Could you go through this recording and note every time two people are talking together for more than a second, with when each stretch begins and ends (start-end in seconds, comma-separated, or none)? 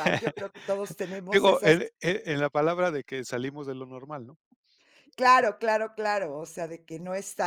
none